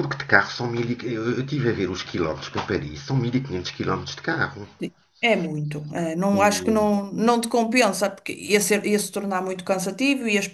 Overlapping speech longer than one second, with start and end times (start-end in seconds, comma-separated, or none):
none